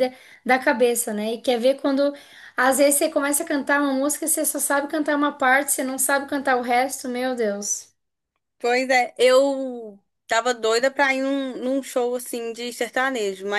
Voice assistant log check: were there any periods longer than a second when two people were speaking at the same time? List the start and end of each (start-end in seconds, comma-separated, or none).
none